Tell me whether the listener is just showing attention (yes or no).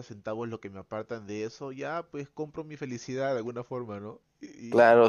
no